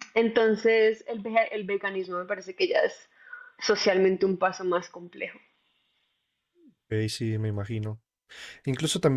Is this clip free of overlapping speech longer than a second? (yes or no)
yes